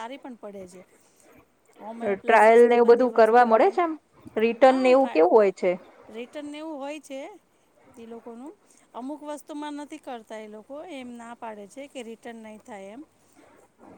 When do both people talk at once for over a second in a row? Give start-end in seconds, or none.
2.2-3.7